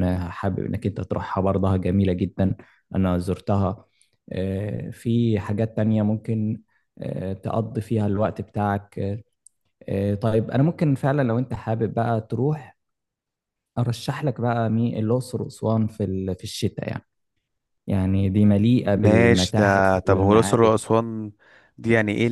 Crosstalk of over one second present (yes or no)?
yes